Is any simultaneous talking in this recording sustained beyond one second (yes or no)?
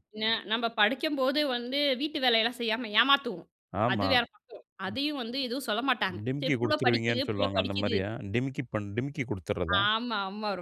yes